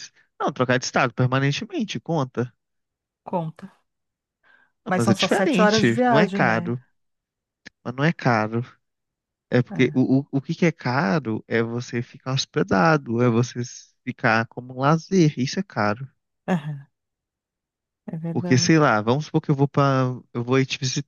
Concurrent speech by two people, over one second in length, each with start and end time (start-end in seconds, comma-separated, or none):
4.8-6.8